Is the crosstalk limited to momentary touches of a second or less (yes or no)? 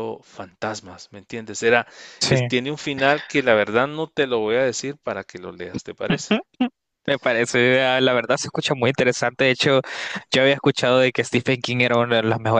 yes